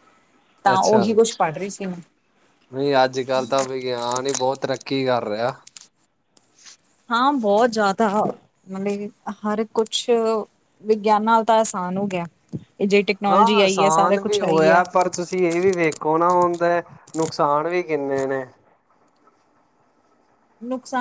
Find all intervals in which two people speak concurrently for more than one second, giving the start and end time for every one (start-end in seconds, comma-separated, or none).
13.3-14.8